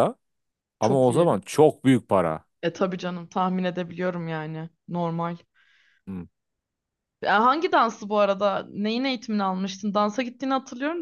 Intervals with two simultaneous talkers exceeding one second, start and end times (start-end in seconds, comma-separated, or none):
none